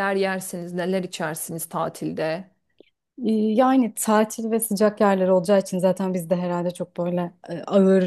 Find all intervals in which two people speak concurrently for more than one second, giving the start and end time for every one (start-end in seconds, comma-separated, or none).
none